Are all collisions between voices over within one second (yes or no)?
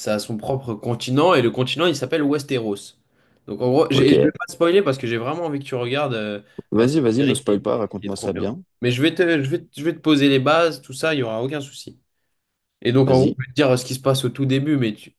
no